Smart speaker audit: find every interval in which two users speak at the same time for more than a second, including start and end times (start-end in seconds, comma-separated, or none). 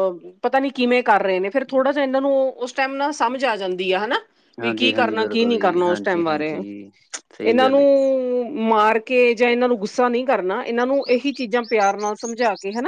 4.6-6.5